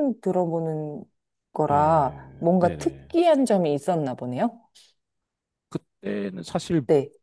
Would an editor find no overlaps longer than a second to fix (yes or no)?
no